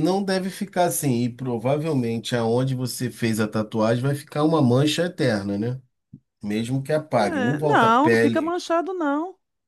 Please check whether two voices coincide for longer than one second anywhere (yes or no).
yes